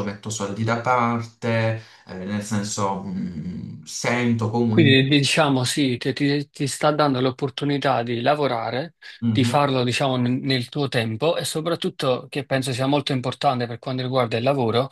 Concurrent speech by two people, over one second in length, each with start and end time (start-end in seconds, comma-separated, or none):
none